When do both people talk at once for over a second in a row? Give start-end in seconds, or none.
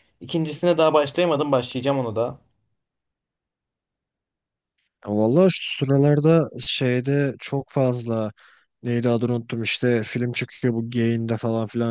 none